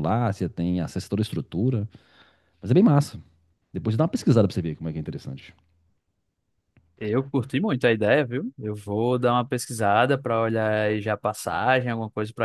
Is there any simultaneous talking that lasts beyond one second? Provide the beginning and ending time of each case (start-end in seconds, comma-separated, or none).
none